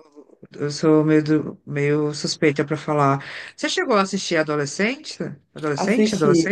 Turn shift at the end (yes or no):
yes